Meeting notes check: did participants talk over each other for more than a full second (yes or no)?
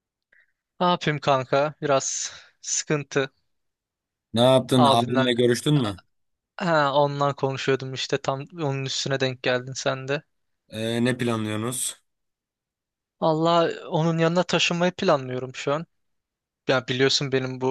no